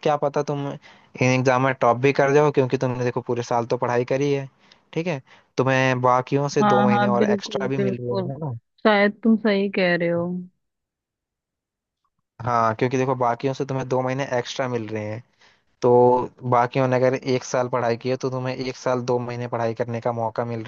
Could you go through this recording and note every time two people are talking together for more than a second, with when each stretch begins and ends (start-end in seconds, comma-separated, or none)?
6.6-8.3